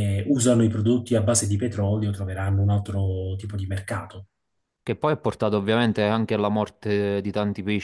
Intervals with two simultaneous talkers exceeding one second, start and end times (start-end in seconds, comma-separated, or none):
none